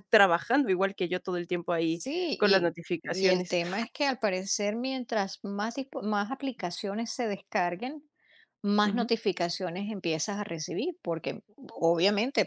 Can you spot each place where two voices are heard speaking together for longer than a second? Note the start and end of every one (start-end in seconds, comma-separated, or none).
1.9-3.6